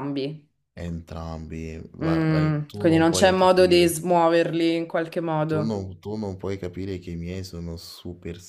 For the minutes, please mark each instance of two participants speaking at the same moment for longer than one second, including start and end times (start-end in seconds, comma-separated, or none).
2.0-3.9